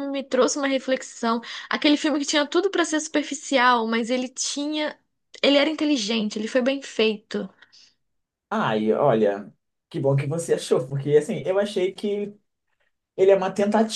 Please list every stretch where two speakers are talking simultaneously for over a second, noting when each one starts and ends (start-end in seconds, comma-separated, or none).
none